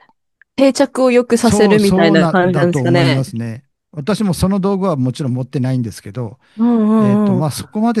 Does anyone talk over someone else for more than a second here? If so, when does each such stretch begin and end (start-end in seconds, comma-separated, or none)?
1.4-3.2